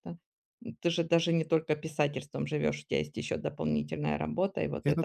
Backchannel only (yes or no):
yes